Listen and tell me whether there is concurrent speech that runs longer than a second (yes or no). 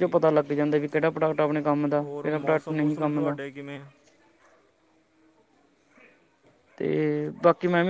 yes